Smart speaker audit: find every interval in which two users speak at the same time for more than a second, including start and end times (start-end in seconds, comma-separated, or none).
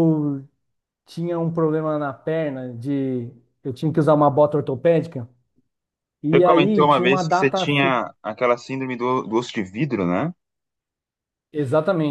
6.3-7.9